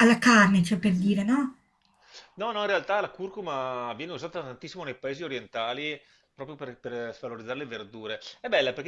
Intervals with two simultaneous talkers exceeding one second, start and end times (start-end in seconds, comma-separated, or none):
none